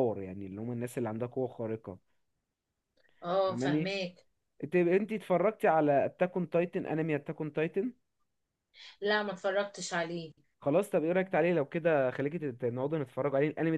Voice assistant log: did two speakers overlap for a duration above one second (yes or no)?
no